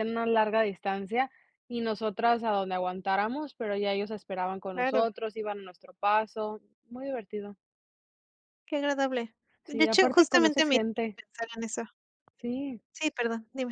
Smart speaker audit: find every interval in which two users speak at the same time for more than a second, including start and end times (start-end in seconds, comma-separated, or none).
9.7-11.2